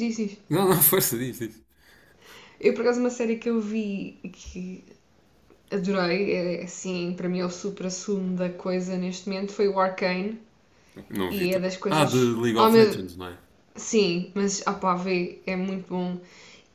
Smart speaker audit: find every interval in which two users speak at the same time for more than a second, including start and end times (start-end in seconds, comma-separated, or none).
11.3-13.0